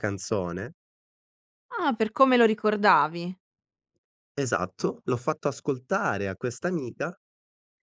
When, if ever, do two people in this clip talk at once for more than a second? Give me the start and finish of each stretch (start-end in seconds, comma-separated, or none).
none